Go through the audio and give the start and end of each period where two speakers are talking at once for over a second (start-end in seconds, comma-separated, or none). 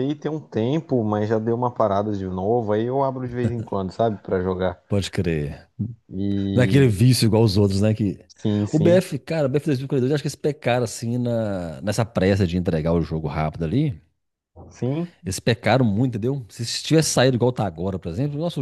none